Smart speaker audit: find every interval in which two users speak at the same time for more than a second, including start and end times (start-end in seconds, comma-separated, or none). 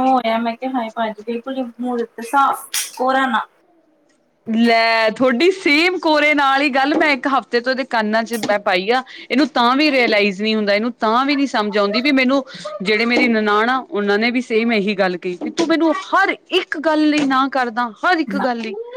none